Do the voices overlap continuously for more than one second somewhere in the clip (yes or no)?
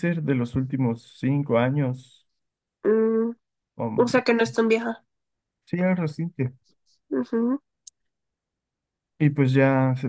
no